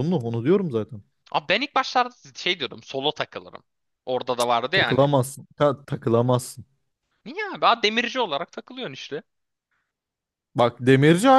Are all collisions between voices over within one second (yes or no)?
yes